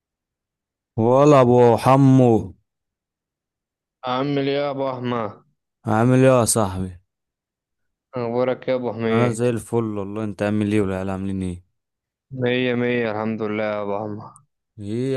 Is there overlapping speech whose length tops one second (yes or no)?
no